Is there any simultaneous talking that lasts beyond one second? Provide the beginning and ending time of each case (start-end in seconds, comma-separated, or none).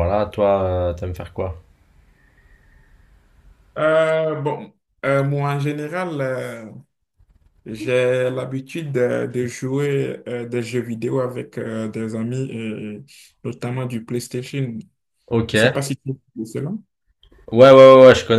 none